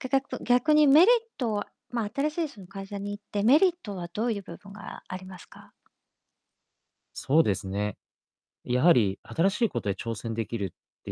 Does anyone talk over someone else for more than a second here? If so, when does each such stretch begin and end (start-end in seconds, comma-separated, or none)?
none